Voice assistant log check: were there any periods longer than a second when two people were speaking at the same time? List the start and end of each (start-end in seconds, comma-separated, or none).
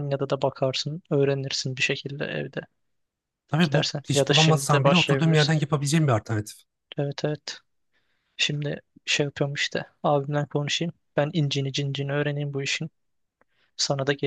3.6-5.6